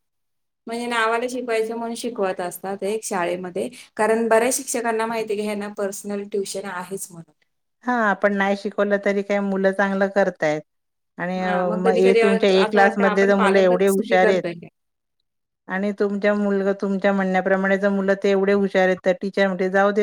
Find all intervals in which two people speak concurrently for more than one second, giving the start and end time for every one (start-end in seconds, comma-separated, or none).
11.8-14.4